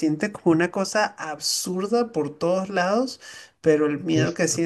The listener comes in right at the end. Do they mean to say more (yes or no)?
no